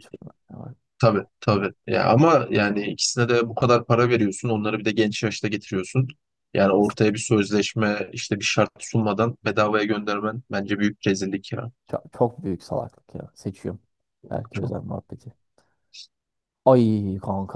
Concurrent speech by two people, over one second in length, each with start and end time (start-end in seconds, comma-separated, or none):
none